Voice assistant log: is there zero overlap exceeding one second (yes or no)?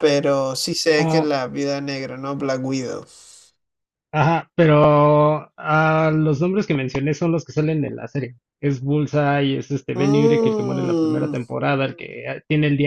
no